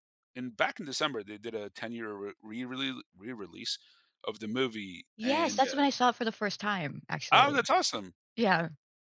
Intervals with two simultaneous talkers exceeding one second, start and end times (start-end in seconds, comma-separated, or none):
none